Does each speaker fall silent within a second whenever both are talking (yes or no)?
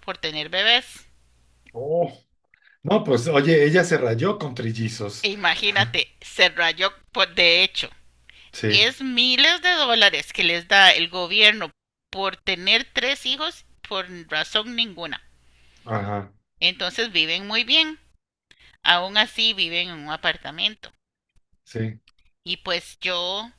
yes